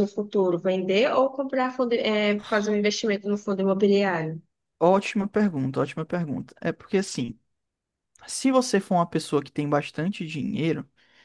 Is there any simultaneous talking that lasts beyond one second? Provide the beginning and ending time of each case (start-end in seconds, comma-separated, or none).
none